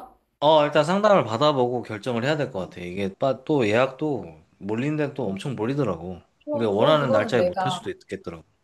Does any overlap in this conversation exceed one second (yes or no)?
yes